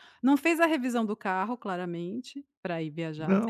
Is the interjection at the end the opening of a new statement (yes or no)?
yes